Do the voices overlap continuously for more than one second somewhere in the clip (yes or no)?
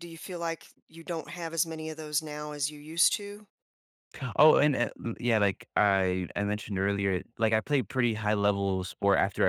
no